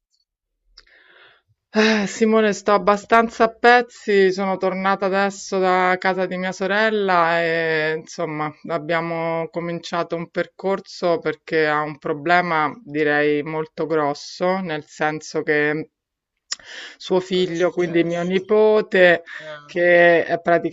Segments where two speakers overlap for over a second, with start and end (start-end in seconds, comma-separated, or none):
17.2-18.5